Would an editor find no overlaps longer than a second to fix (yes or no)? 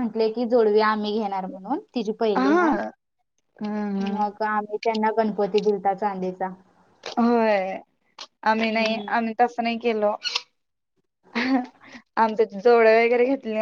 yes